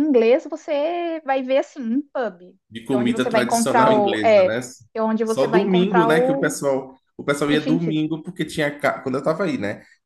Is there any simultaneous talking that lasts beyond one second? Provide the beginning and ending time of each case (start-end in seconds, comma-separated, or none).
2.9-4.6, 5.2-6.6